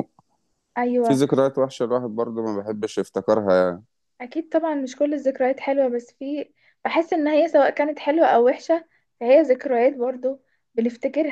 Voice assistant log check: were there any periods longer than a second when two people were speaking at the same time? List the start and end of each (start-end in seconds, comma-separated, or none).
none